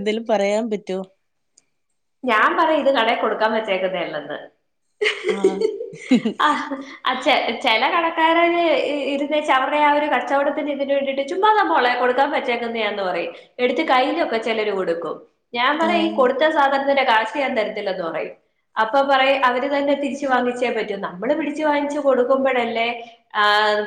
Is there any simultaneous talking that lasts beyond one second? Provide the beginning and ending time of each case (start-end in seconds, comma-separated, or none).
none